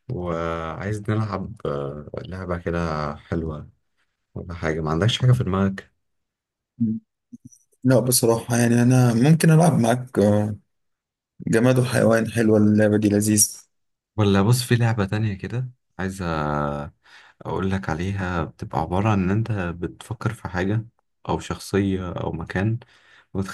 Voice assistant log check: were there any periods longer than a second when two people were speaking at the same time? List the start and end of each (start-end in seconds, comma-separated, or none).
none